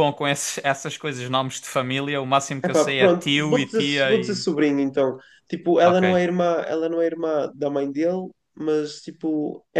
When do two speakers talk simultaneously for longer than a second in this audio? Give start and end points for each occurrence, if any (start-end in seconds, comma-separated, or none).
2.6-4.5